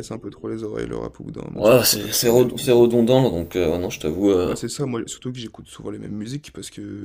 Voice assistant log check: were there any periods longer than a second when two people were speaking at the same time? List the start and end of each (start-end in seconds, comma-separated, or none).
1.5-2.9